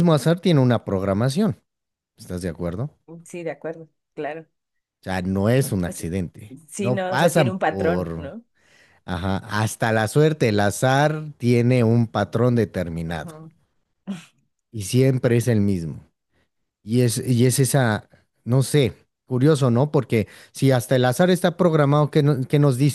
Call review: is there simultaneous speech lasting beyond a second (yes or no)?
yes